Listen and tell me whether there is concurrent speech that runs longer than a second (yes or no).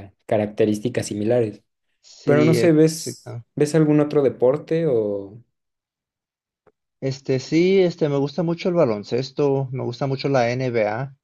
yes